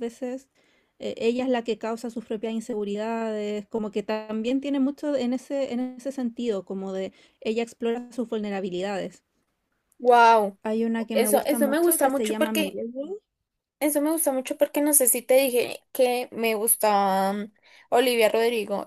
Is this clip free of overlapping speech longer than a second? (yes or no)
no